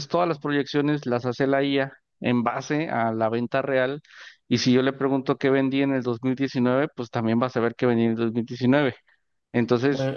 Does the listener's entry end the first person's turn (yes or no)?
no